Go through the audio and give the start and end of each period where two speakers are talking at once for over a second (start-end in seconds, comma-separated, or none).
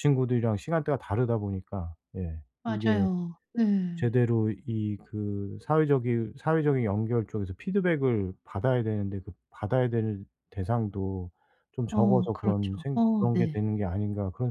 11.9-13.6